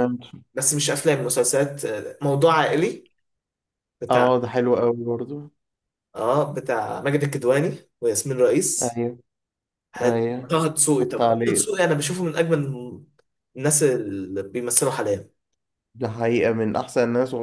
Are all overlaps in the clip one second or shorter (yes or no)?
no